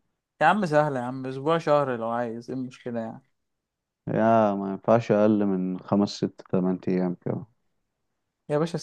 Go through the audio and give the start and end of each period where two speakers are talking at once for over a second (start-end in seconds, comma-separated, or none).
none